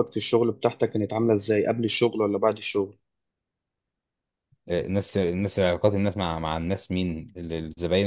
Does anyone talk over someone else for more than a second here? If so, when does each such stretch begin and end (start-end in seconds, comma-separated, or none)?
none